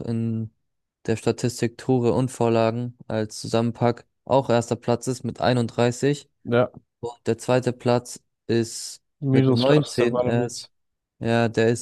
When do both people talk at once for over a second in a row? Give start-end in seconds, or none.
9.2-10.7